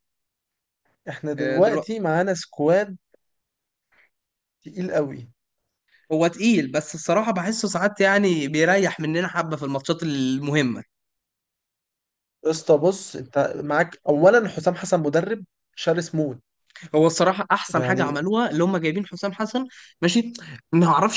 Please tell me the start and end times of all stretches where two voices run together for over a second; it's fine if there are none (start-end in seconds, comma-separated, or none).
none